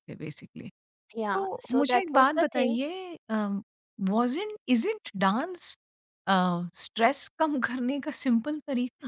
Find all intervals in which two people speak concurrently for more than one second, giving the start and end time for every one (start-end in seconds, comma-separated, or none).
1.3-2.8